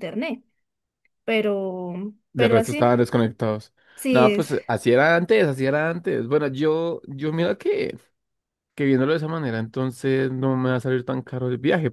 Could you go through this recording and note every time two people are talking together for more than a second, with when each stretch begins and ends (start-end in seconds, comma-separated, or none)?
none